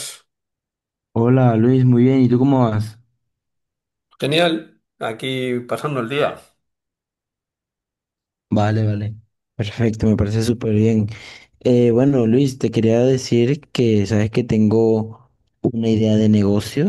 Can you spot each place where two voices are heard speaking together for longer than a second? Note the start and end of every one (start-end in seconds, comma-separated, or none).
none